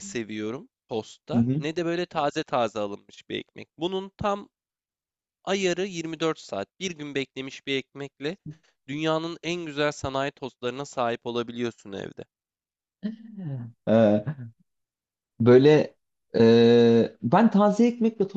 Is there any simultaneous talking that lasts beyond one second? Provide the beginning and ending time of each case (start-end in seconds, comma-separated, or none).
none